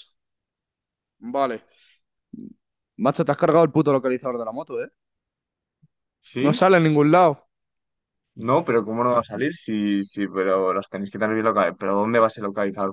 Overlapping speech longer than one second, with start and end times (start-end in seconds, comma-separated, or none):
none